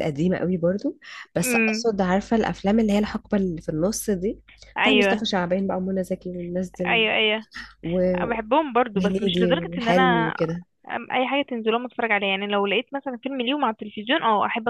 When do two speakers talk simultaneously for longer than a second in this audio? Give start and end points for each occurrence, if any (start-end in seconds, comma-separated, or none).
8.9-10.3